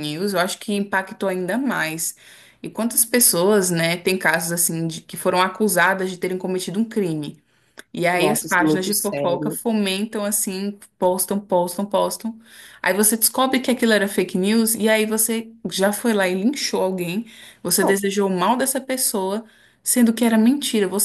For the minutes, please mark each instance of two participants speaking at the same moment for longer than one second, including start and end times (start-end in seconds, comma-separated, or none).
8.1-9.6